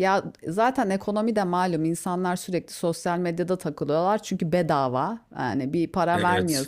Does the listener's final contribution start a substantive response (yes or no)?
no